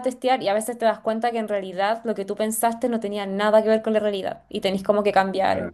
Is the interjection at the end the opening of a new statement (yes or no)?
no